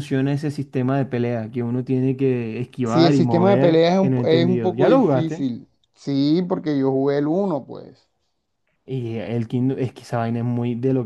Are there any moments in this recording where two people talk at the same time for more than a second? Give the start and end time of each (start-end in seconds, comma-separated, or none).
2.8-5.5